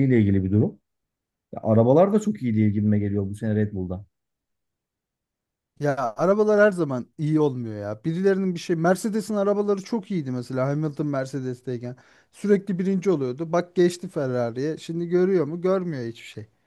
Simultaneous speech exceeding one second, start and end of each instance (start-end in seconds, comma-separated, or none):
none